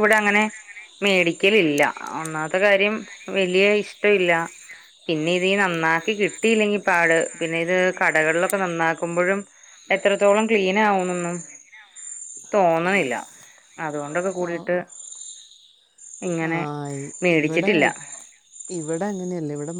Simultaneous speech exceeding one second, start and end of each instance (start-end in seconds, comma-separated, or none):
none